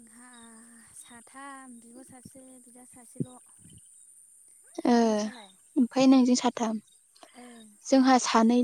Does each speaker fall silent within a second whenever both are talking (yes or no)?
yes